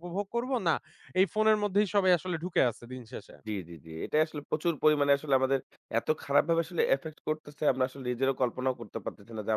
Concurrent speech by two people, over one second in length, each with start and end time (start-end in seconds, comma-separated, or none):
none